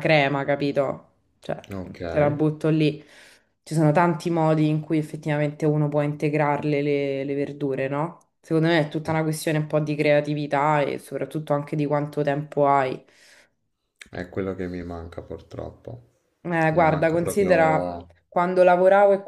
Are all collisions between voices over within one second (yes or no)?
no